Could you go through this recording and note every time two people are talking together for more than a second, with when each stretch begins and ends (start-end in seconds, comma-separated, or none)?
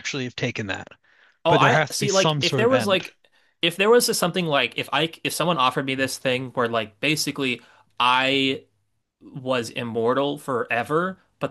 1.5-3.1